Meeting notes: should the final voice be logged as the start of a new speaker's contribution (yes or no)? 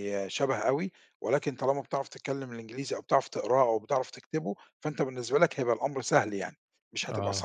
yes